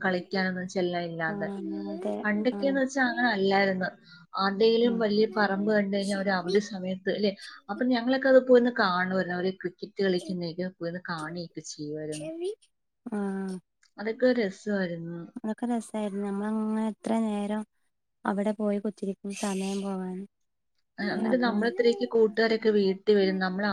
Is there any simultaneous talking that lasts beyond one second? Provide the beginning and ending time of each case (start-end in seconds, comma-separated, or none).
none